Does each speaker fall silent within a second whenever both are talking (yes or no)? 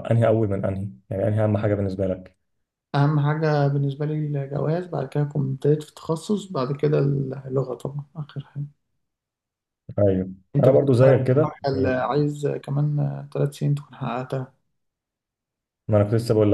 no